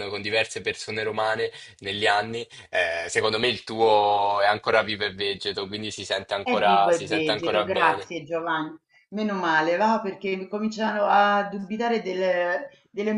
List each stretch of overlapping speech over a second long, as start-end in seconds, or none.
6.4-8.1